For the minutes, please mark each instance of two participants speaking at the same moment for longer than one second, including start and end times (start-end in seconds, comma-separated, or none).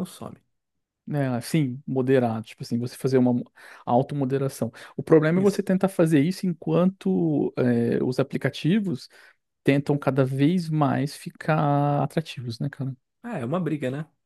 none